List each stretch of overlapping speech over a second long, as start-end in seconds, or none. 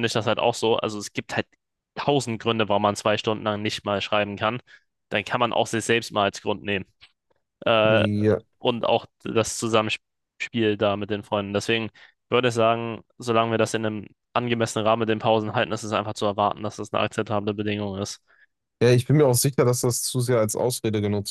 none